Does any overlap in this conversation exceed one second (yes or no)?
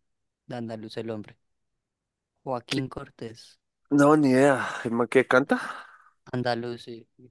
no